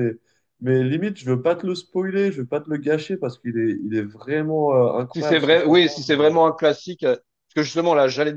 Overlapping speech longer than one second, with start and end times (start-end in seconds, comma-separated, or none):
5.1-6.3